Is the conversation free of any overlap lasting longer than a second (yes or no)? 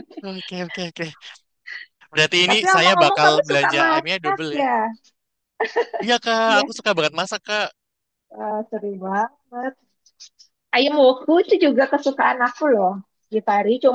no